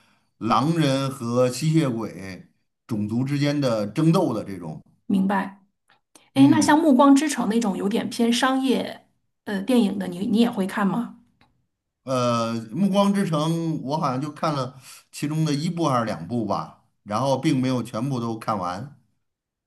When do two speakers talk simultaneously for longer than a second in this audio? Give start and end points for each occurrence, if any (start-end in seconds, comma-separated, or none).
none